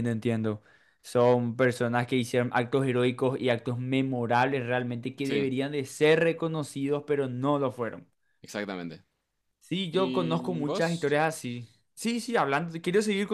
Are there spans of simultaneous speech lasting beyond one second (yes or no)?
yes